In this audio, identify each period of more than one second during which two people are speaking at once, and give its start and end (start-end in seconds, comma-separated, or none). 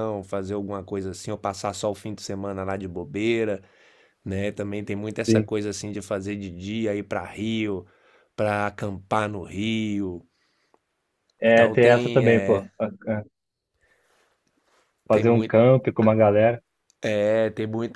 11.4-12.7